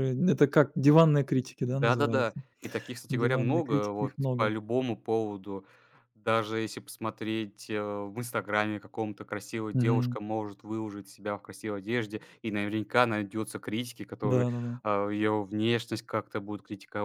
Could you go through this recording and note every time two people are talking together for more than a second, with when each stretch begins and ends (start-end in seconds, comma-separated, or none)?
3.1-4.5